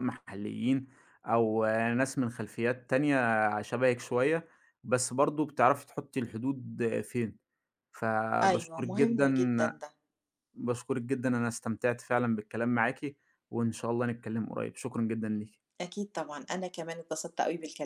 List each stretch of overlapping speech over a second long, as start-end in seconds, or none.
8.4-9.7